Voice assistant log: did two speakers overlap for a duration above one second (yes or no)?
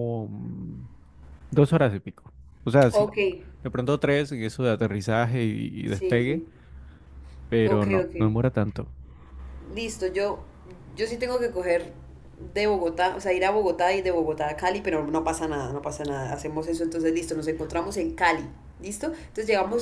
no